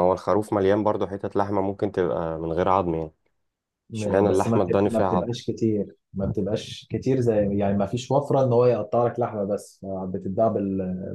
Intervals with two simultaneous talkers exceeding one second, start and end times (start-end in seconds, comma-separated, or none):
3.9-5.3